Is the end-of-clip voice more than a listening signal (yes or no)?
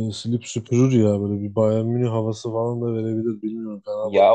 yes